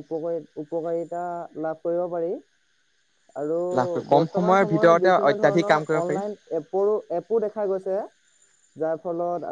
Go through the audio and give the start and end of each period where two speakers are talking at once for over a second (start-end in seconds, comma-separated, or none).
4.1-6.2